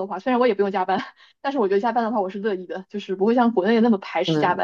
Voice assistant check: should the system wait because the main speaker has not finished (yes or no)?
yes